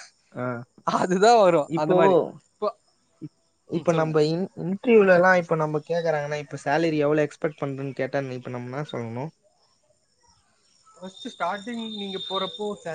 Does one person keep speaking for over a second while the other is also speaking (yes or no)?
no